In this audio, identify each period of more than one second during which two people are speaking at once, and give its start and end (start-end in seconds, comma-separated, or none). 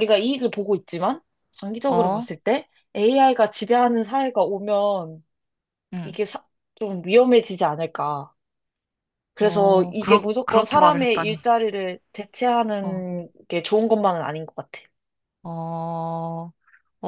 9.4-11.4